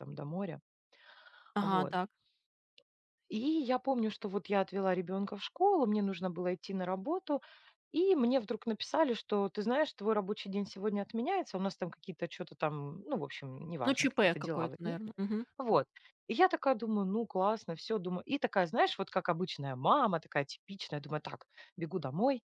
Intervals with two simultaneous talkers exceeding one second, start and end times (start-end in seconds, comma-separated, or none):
13.8-15.1